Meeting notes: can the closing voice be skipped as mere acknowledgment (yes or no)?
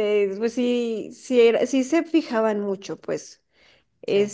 yes